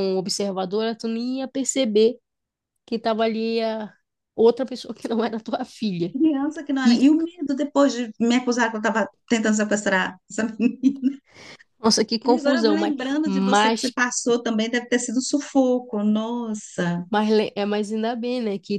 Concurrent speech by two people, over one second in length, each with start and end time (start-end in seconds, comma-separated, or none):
12.2-14.0